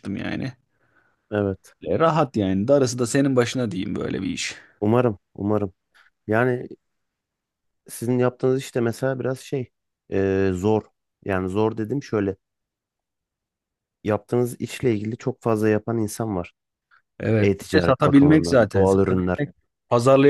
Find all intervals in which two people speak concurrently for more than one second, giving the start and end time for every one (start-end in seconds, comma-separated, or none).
17.4-19.4